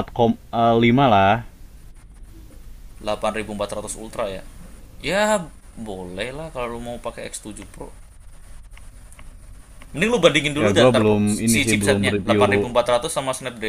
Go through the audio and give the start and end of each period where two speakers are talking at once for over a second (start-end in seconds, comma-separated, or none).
10.6-12.7